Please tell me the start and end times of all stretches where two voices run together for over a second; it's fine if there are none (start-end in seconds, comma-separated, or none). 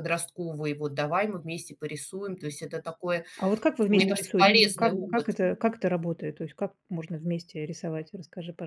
3.9-5.4